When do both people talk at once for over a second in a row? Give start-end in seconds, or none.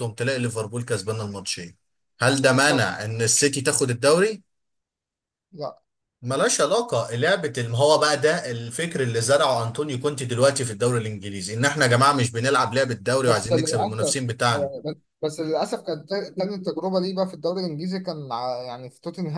13.2-14.7